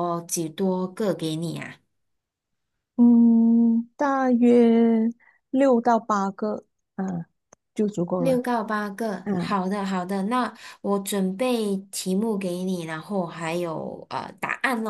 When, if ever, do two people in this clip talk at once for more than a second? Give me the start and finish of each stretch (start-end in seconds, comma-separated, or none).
none